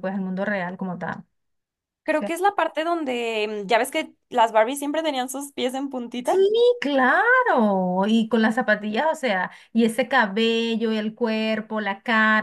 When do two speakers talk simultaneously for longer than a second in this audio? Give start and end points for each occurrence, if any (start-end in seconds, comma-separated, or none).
none